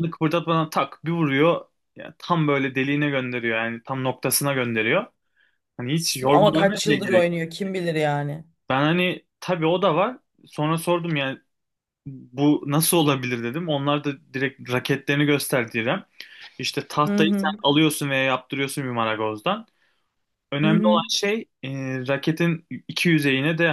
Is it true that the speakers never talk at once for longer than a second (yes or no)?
no